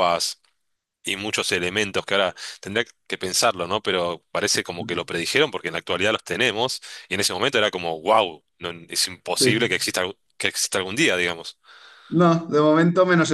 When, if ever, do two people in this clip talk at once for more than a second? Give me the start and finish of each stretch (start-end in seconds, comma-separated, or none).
none